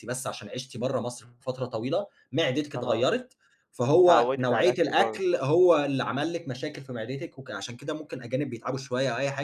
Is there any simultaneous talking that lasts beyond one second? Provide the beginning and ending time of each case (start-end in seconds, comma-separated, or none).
4.0-5.2